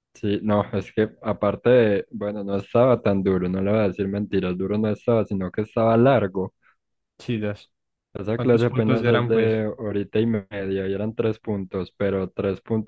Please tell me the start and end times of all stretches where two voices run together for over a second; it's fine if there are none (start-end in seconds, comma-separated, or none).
8.3-9.5